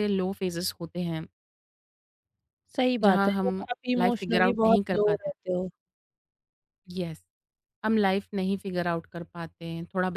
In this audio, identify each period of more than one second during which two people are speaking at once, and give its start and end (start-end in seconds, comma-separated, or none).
3.0-5.3